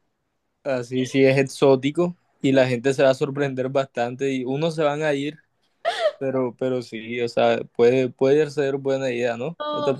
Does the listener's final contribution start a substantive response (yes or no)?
yes